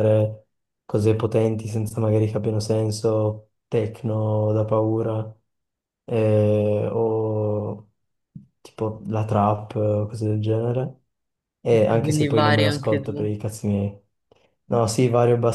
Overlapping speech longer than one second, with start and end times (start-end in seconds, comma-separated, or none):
11.7-13.3